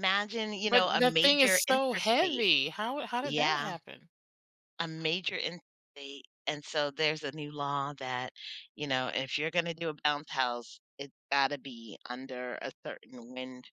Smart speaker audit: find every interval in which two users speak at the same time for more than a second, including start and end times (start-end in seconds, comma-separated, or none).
0.7-2.5